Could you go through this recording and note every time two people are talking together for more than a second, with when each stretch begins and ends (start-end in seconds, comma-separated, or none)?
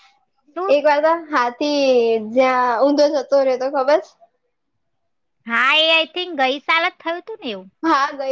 none